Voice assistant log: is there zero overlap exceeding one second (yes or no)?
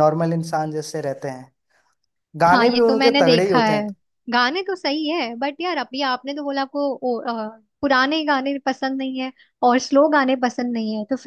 no